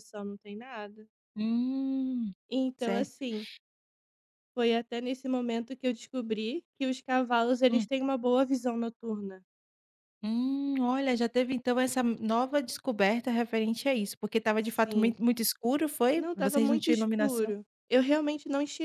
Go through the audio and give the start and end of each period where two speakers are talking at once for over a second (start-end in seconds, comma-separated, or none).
16.1-17.5